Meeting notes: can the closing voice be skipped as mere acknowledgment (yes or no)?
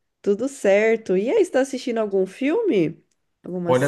no